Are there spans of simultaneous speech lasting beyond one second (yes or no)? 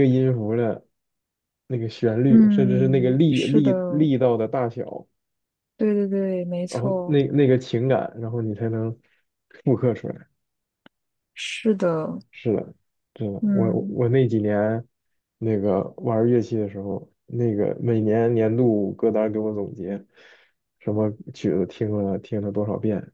yes